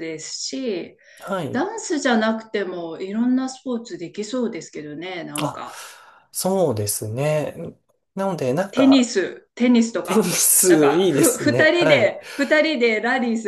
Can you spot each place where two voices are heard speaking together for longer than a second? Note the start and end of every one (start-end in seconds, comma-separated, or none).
10.0-12.2